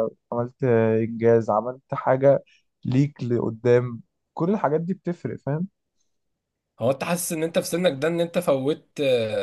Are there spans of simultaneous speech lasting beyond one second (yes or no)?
no